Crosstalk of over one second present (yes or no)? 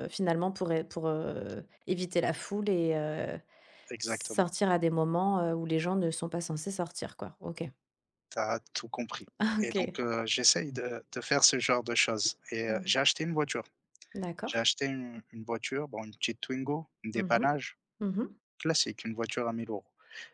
no